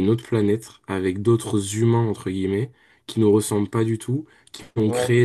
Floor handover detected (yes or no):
no